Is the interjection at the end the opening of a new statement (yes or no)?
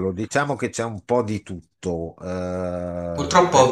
yes